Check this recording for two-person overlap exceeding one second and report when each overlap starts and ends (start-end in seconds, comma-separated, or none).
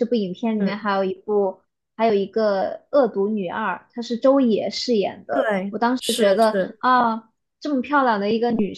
none